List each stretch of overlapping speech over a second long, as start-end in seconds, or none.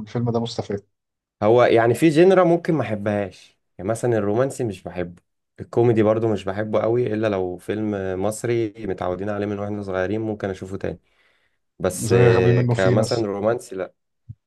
12.0-13.2